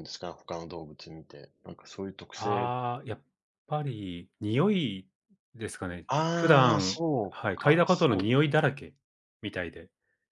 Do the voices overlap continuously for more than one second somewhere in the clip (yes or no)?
yes